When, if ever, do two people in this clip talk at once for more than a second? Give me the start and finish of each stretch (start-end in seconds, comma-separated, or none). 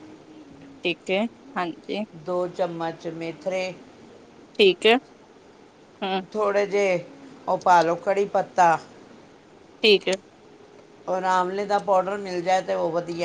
none